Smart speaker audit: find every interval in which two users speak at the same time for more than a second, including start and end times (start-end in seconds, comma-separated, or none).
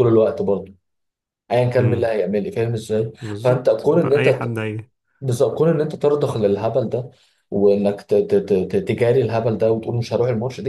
3.2-4.6